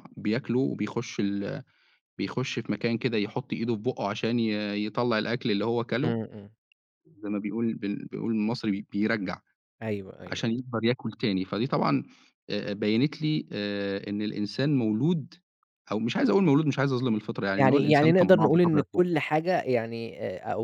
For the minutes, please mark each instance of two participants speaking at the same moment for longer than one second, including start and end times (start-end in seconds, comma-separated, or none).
17.6-19.0